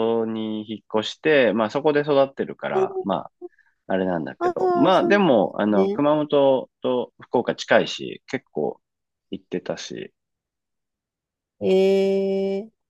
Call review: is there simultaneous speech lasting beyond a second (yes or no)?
yes